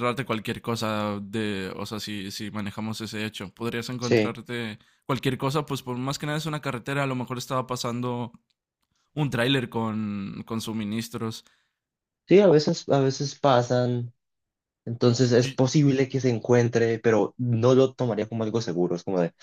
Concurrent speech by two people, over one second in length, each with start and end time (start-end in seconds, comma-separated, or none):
none